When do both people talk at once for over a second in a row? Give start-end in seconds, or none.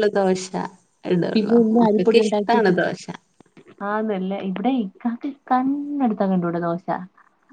1.3-2.8